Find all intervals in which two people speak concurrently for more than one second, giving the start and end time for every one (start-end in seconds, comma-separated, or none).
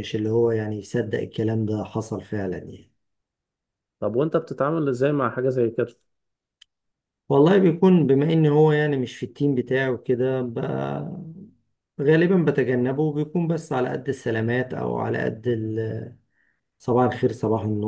none